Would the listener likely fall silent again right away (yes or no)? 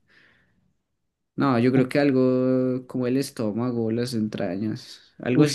no